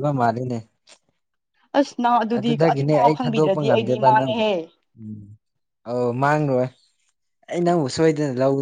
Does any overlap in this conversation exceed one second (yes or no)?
yes